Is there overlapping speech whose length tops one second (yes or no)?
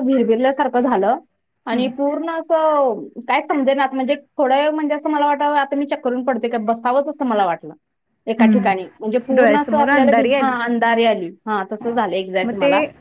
yes